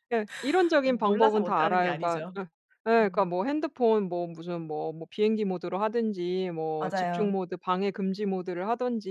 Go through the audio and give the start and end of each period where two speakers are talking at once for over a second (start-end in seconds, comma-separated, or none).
0.8-2.4